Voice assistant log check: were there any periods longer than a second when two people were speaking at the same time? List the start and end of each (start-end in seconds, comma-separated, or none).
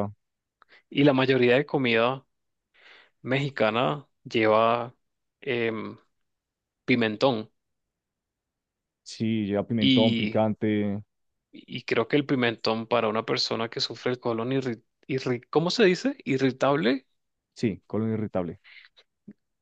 none